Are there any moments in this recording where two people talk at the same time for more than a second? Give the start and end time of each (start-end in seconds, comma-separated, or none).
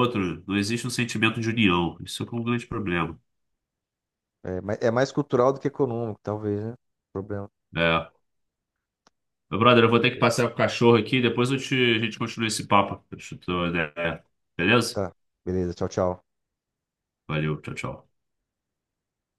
none